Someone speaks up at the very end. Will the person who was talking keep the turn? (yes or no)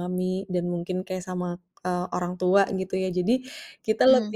yes